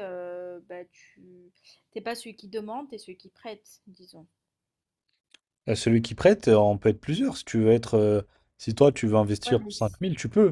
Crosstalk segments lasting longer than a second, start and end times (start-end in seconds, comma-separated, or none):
none